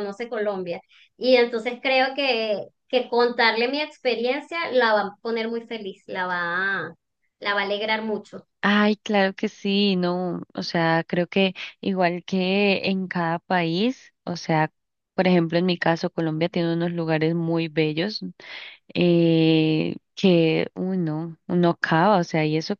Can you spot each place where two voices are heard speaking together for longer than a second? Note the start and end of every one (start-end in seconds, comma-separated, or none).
none